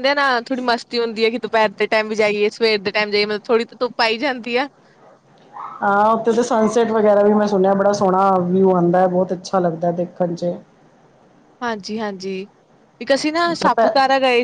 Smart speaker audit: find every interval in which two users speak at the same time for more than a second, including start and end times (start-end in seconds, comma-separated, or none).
none